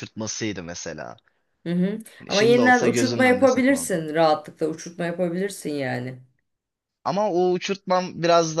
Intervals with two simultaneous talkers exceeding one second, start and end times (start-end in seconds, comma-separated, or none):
2.2-4.0